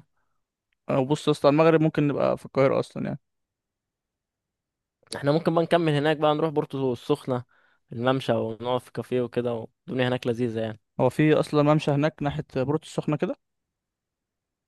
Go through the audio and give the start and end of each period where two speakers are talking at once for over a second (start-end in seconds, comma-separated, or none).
none